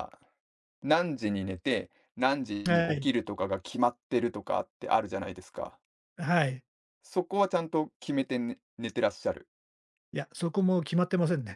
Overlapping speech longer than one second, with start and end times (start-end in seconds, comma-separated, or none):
none